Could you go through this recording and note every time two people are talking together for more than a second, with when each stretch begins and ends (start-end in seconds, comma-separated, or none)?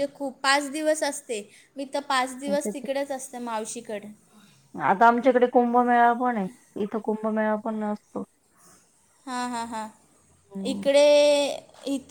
none